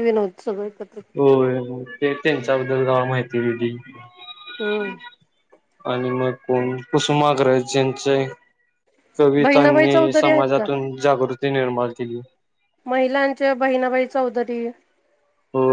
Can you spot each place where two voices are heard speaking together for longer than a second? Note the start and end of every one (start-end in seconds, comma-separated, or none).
9.4-10.7